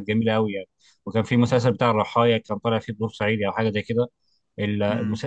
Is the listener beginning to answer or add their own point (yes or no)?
no